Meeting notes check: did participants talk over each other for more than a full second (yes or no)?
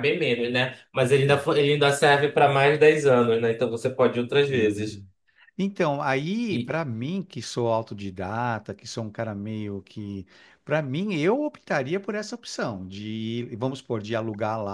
no